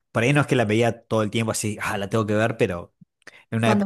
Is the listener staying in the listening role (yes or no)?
yes